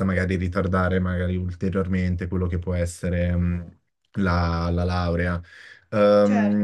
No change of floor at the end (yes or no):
yes